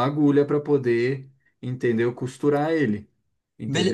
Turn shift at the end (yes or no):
yes